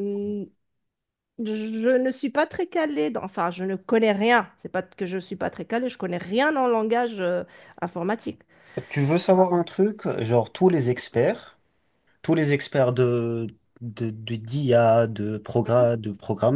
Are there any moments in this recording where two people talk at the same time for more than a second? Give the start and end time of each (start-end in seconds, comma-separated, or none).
none